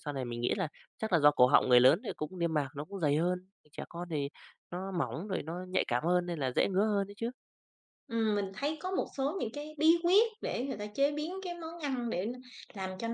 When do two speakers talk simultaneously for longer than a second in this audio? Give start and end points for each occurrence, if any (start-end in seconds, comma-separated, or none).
none